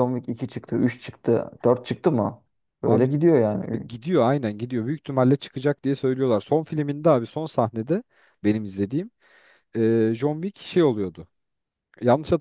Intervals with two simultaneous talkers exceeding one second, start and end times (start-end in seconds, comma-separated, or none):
none